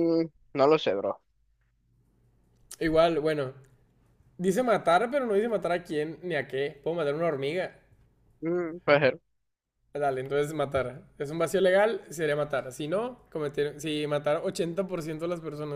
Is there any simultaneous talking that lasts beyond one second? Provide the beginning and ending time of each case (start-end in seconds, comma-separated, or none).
none